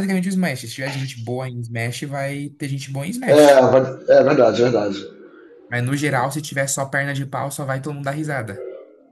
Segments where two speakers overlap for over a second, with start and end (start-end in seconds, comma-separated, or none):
none